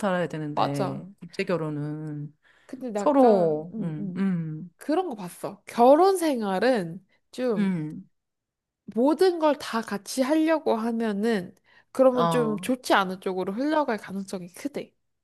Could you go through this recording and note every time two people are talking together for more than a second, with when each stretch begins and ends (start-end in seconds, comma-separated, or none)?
3.0-4.3